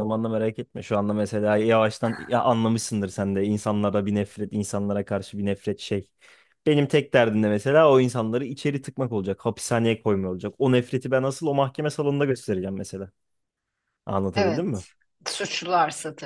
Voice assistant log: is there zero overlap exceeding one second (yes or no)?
yes